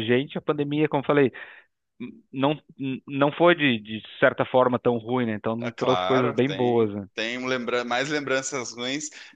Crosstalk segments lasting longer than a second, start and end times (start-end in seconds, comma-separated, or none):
5.6-7.0